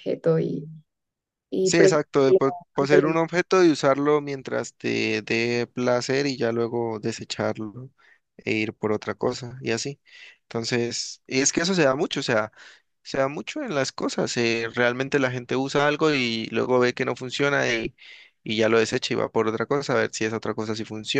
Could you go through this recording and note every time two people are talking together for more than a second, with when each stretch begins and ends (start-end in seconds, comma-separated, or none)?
1.6-3.1